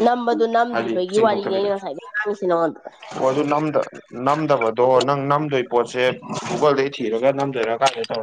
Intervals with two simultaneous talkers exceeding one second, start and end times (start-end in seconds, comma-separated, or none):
none